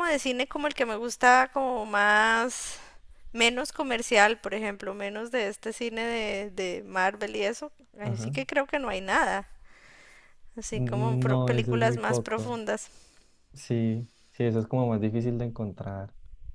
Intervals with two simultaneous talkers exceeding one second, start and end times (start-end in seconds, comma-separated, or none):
10.7-12.5